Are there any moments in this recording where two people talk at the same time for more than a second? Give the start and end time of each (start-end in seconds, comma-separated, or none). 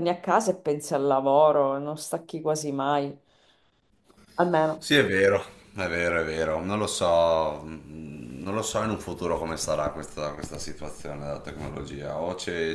none